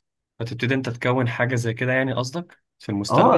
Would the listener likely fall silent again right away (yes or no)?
no